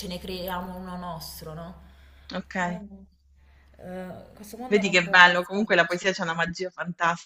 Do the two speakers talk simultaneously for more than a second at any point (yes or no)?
yes